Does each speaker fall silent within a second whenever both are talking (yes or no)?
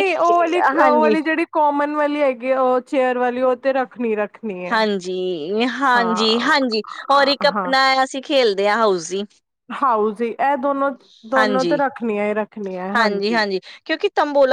yes